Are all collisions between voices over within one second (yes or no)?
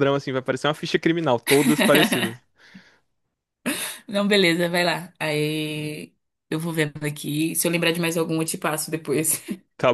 yes